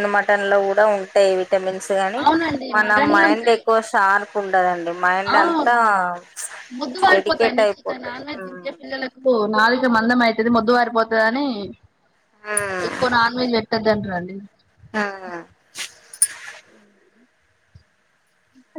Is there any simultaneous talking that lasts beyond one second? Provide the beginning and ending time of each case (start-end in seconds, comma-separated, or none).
7.1-8.8